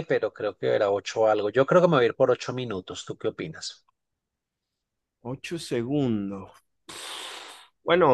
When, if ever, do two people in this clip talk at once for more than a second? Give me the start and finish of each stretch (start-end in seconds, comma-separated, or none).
none